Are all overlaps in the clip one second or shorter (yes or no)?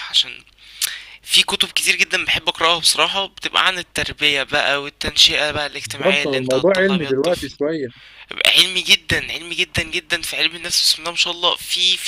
no